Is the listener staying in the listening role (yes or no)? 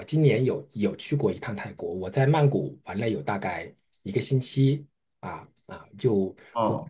yes